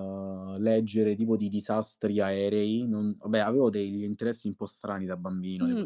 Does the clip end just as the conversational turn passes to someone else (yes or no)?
yes